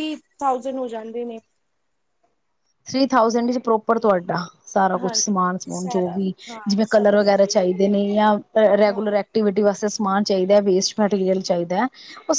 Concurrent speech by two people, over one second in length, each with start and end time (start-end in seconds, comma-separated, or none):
5.0-7.4